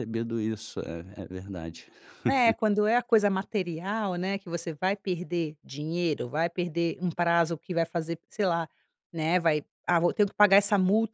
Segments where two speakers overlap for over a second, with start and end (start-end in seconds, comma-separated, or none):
none